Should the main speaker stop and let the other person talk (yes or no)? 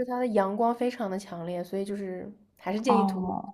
yes